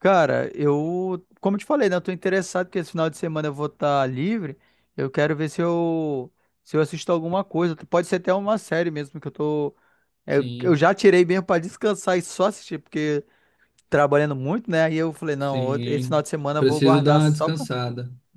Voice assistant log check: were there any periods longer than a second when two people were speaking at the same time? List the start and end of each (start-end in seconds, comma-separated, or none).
15.4-17.6